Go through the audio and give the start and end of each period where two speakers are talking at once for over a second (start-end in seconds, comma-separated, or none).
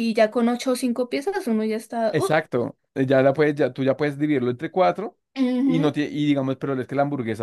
none